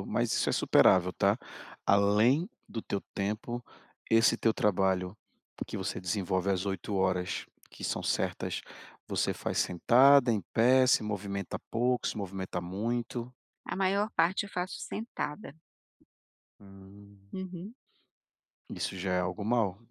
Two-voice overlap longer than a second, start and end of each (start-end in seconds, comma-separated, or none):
none